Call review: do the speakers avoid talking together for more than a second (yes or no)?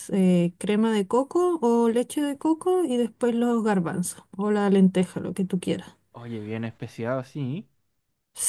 yes